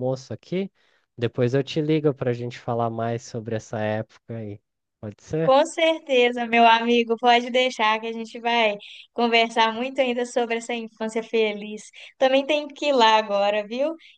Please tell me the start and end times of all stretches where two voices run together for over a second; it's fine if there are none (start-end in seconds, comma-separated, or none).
none